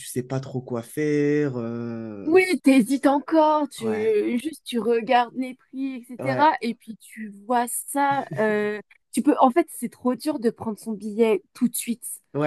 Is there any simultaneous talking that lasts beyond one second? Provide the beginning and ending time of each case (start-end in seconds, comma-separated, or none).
none